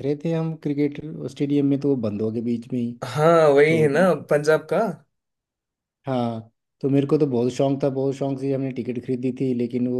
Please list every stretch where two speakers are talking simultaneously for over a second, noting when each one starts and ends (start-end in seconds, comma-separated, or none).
none